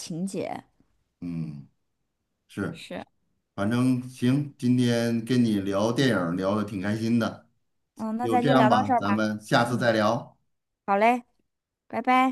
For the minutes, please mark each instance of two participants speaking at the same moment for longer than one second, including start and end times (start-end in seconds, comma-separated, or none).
8.2-9.9